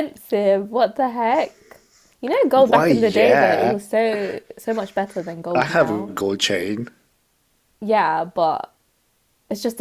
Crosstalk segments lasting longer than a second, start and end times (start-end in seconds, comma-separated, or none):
2.5-3.8